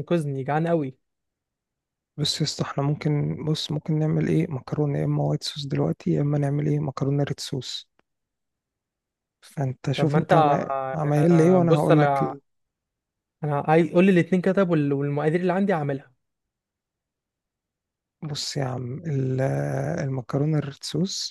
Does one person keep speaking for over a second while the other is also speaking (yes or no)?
yes